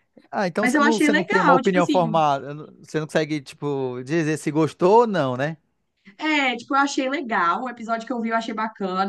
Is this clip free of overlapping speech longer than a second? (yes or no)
no